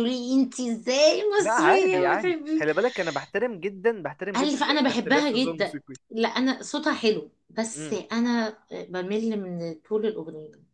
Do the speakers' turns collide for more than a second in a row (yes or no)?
yes